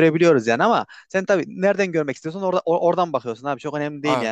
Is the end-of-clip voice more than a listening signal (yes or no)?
no